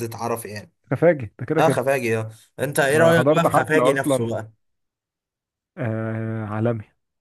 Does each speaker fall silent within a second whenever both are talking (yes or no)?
no